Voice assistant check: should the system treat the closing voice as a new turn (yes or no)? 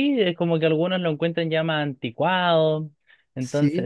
no